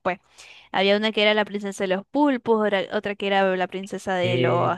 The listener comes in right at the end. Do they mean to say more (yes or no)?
no